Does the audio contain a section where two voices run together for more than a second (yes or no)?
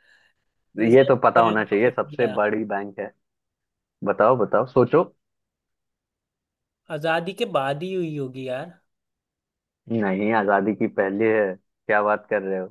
yes